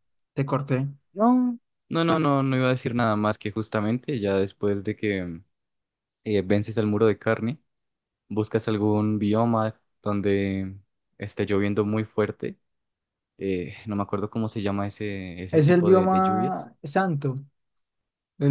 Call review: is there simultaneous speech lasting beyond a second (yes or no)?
yes